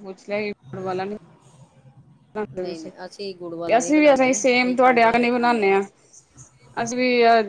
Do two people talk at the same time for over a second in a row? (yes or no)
yes